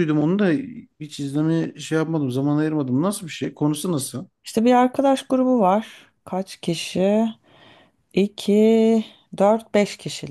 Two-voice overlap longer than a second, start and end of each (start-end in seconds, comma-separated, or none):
none